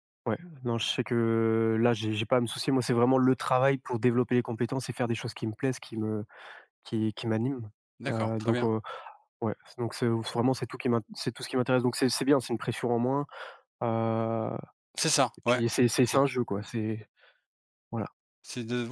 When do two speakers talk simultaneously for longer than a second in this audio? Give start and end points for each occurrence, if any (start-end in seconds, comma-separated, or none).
none